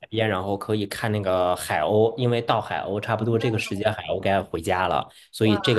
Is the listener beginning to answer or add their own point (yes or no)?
no